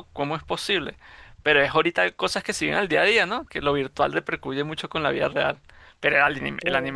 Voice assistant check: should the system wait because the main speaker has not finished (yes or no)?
yes